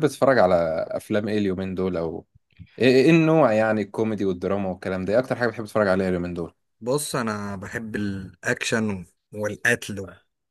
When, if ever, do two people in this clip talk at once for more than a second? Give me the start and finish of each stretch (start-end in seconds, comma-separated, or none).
none